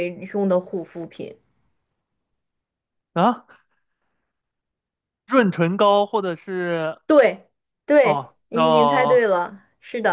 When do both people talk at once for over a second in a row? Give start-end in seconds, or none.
8.0-9.2